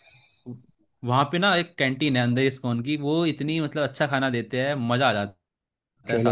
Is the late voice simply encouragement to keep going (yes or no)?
no